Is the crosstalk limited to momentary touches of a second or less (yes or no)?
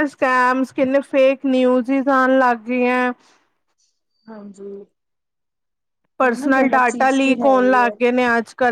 no